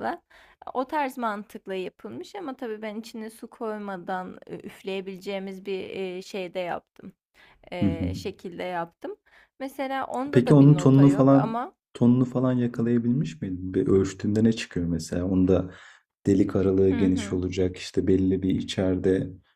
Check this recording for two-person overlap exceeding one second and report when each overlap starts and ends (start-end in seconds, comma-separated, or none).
10.3-11.7